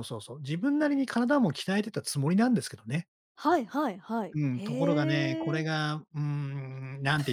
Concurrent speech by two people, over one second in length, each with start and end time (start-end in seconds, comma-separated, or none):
4.3-5.7